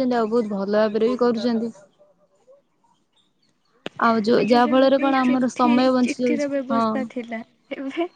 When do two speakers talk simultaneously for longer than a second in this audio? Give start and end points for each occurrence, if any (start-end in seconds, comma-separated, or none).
4.4-6.8